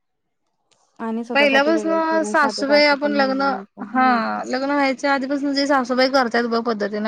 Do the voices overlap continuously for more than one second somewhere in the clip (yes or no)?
yes